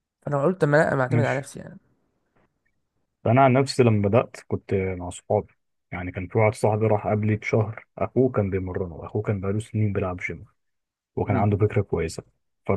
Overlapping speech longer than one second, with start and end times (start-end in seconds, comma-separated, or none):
none